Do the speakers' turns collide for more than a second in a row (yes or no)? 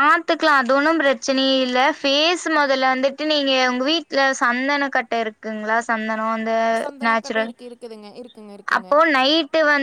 no